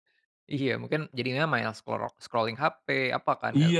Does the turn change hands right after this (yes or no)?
yes